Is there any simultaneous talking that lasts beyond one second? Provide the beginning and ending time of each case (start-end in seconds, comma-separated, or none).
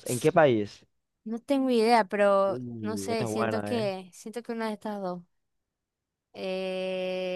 2.5-3.9